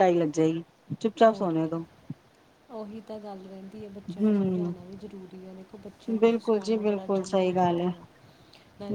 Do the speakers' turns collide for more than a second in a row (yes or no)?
yes